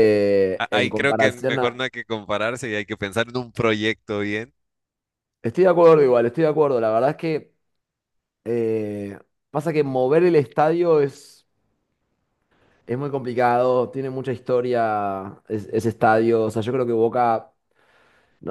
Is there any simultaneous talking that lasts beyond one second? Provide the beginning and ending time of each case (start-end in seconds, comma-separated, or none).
0.6-1.8